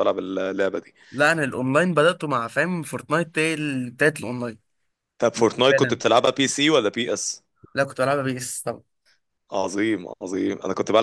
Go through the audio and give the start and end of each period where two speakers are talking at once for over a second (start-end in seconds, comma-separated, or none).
none